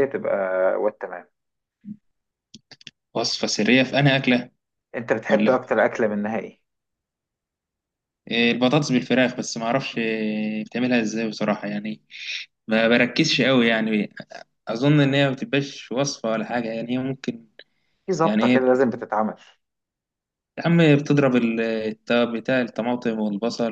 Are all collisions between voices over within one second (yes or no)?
yes